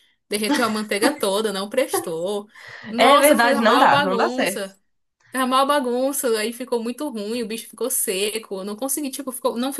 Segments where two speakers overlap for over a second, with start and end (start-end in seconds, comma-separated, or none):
3.0-4.8